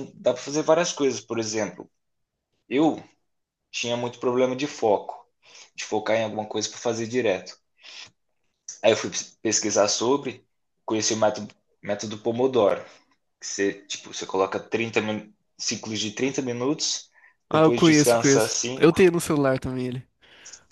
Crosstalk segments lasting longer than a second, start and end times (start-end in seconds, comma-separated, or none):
17.5-19.1